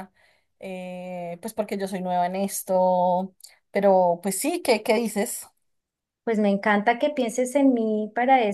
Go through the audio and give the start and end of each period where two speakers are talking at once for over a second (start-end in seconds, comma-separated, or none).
none